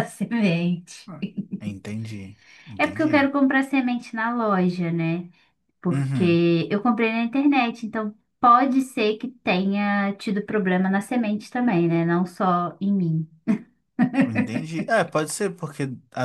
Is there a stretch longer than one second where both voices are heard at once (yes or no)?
no